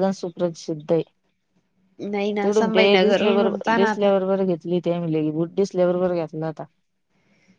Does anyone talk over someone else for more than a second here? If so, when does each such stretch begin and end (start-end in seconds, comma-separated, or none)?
2.4-4.1